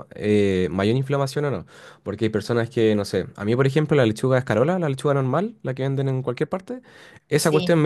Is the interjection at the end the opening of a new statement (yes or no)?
no